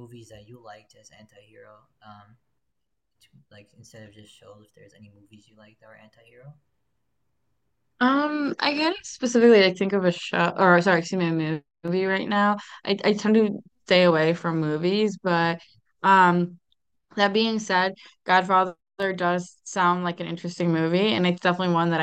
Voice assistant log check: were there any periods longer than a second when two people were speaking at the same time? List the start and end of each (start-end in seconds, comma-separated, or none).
none